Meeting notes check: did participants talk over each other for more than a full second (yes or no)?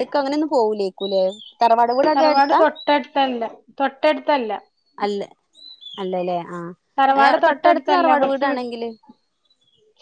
yes